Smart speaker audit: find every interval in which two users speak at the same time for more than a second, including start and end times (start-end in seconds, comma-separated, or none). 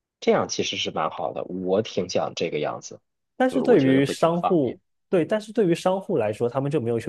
3.5-4.8